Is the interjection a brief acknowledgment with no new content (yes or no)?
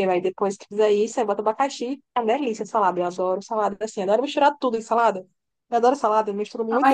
no